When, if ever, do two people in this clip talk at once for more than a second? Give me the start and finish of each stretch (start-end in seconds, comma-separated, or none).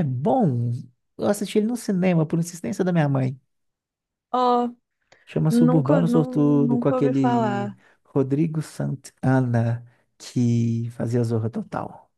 5.5-7.8